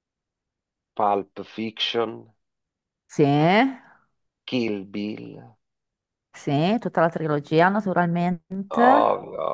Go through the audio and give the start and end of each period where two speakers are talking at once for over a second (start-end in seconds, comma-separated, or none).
none